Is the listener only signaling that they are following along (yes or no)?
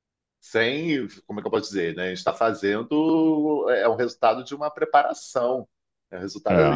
yes